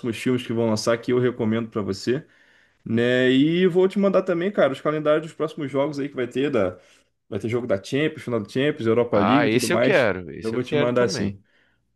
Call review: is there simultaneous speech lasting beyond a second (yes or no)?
yes